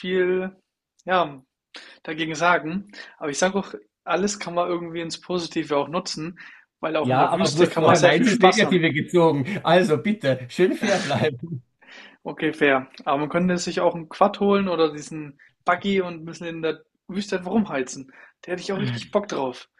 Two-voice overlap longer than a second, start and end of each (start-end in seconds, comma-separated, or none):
7.0-8.8